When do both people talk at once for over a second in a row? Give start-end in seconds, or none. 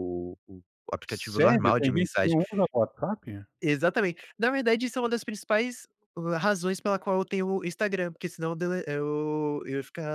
1.1-2.4